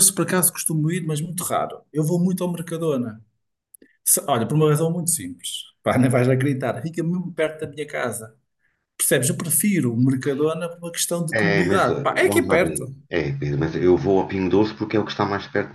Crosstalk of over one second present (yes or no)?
yes